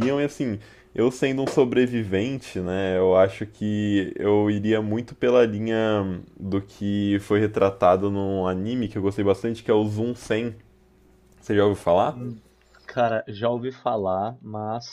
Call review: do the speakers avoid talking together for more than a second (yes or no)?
yes